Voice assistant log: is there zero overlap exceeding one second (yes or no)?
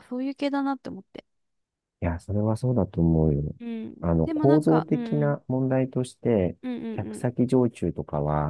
no